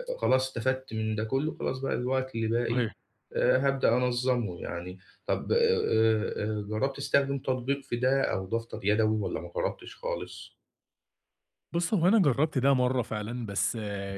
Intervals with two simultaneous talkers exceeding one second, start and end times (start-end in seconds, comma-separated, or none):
none